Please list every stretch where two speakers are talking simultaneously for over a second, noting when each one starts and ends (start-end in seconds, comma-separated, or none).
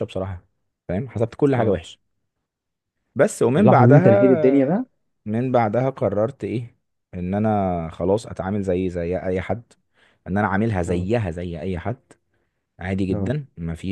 3.5-4.8